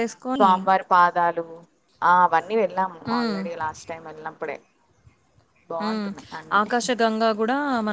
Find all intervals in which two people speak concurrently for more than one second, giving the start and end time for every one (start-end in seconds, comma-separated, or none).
none